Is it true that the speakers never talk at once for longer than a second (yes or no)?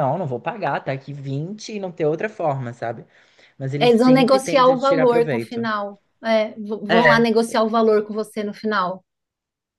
no